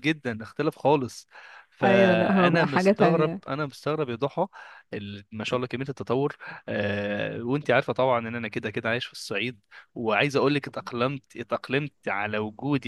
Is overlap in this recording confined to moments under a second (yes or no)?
no